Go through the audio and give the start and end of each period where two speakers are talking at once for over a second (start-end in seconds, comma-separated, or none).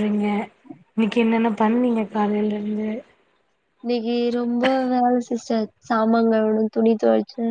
none